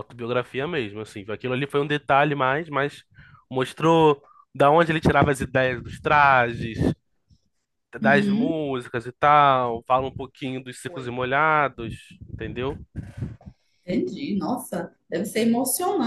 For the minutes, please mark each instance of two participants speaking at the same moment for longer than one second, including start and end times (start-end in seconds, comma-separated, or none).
none